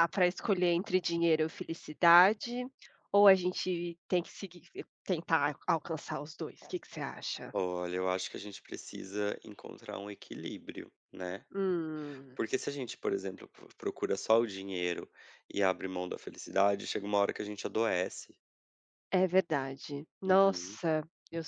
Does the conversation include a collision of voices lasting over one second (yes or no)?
no